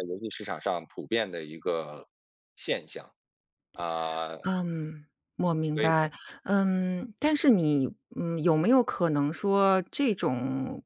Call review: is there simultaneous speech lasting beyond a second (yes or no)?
no